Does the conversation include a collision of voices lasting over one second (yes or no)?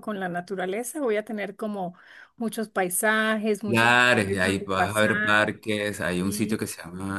yes